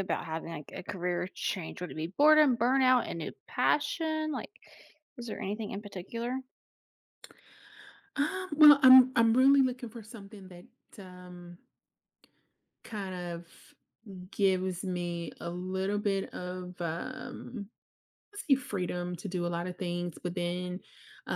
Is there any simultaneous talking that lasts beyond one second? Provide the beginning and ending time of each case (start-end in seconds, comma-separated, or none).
none